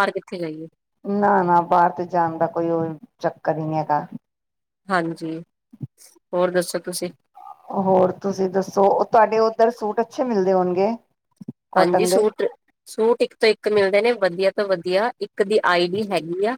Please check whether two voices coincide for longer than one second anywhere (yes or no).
no